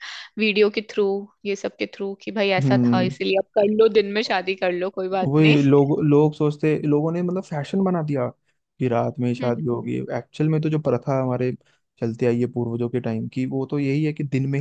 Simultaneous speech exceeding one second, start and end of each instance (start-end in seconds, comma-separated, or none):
none